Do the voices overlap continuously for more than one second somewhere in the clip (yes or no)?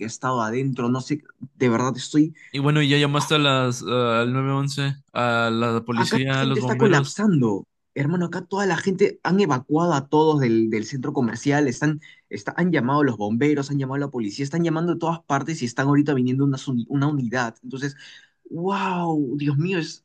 yes